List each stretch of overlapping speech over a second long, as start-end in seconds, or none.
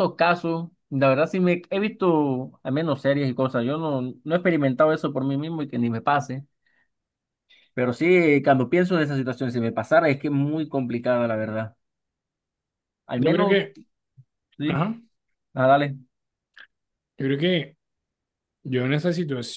none